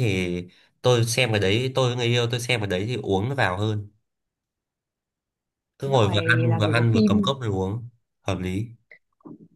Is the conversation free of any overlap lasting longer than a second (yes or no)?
no